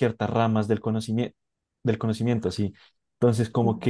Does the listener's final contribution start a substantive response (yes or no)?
no